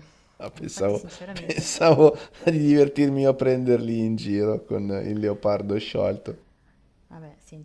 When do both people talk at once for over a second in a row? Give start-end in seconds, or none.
0.6-1.9